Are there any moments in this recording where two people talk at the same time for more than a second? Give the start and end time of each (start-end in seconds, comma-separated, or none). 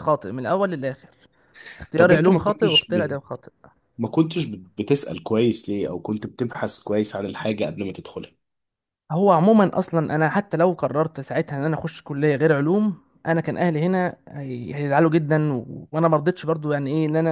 1.9-3.2